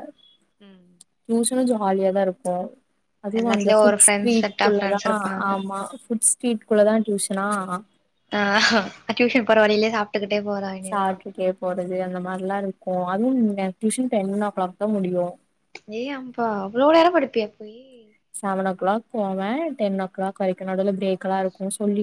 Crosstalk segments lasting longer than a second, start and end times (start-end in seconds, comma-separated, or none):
3.4-5.5